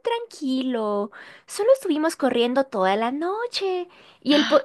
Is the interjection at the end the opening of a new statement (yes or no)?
no